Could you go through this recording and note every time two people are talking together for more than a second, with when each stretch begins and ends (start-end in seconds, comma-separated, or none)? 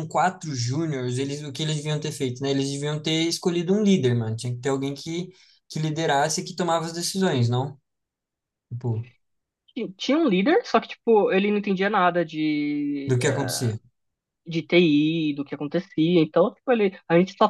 none